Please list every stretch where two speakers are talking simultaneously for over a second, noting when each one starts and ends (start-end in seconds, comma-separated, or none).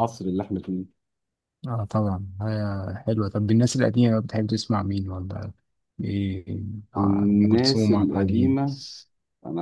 7.0-8.6